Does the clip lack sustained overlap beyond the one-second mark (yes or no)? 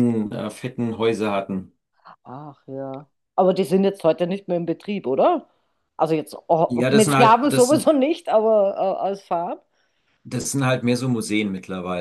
no